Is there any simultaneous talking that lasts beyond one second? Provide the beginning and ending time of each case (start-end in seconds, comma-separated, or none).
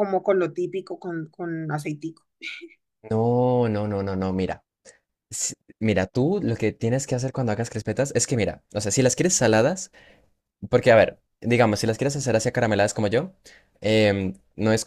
none